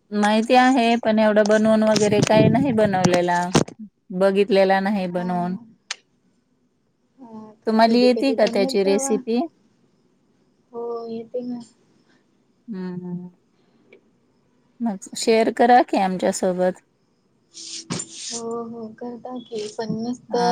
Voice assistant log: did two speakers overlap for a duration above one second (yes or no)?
yes